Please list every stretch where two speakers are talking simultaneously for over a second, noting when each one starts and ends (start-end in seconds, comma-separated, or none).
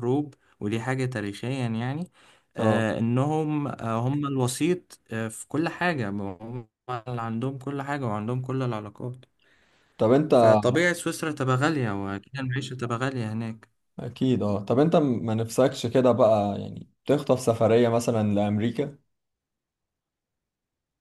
none